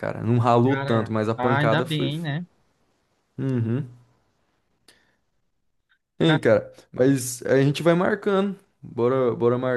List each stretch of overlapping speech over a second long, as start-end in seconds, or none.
0.6-2.4